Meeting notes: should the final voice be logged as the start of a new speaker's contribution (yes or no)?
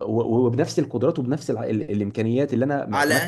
yes